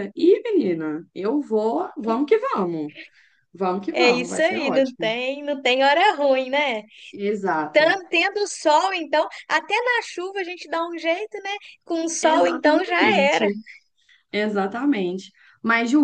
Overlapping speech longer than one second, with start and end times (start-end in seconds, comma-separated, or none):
3.9-5.2, 12.2-13.5